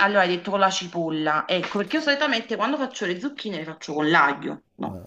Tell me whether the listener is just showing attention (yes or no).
no